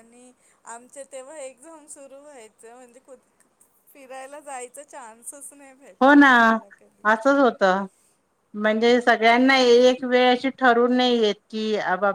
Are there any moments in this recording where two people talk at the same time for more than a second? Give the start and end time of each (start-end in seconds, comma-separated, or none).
none